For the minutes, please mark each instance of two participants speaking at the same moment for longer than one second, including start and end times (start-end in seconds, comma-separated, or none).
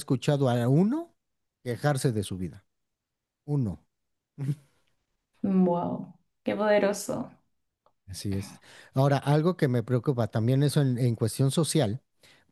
none